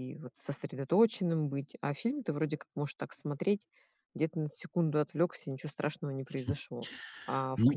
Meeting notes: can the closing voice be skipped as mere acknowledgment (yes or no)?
yes